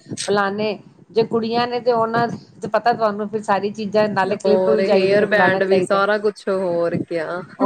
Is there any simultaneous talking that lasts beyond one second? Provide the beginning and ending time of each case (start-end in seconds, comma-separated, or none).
4.4-6.0